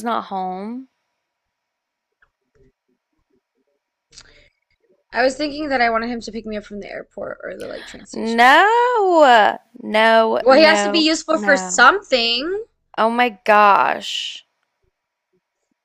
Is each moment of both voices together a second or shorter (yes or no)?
no